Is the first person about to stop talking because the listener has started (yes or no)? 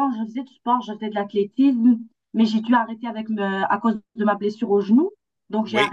no